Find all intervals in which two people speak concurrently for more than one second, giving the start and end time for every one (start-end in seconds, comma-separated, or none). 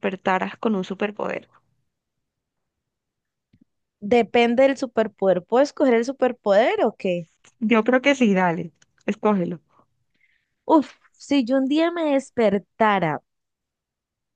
none